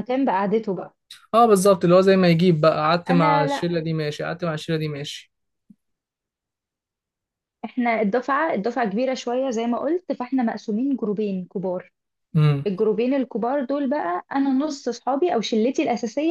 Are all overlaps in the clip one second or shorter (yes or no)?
yes